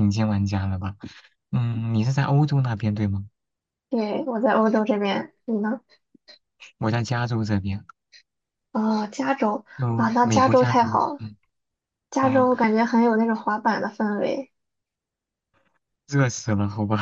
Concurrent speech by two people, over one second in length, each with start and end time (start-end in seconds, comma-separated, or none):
9.8-11.2